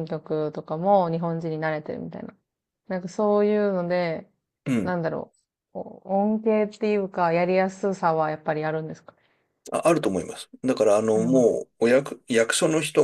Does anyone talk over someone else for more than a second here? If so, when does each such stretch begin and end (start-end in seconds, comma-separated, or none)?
none